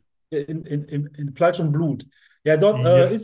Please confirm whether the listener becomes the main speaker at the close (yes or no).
no